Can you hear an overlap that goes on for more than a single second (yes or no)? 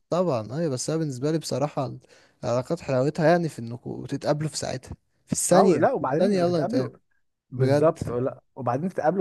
yes